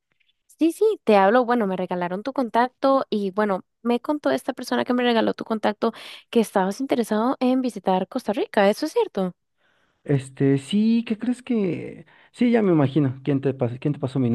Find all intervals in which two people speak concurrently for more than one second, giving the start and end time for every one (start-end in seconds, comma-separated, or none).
none